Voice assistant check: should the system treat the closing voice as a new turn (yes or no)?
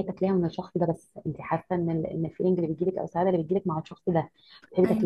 no